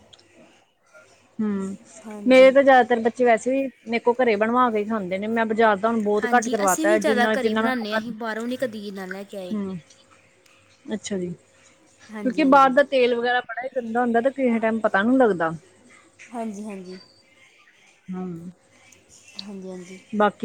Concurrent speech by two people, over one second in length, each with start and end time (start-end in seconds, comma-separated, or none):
6.2-8.0